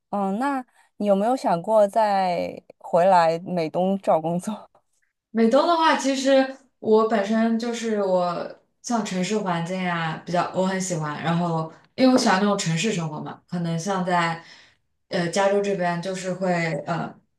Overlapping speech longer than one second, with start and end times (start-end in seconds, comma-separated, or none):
none